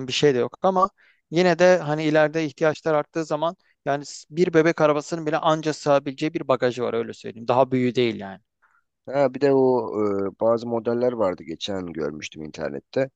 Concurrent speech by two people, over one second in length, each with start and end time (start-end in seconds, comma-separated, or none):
none